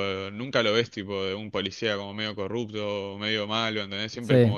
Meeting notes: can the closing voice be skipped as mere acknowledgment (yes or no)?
no